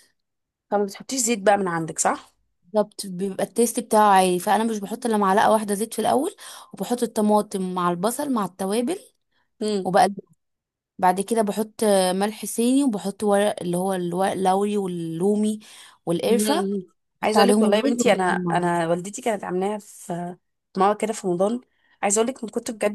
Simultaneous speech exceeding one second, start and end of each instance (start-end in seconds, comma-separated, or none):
17.2-18.8